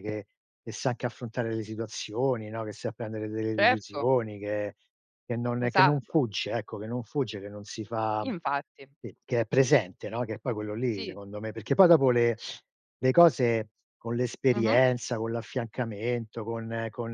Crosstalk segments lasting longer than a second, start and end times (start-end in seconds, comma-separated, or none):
none